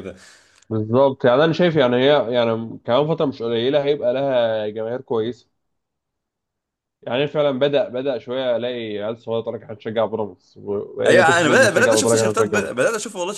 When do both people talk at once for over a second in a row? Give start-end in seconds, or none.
11.1-12.8